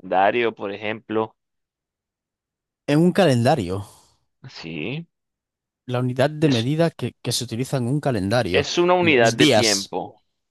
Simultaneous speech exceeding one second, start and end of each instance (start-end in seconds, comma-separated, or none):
8.5-9.9